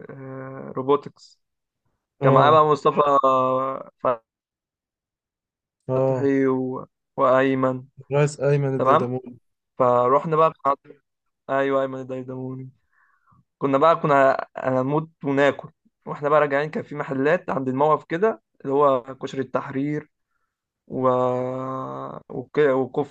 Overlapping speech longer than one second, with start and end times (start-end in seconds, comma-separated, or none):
none